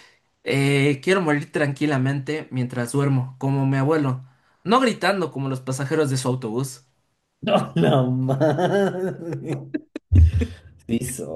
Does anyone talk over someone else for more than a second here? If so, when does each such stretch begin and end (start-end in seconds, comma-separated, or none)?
none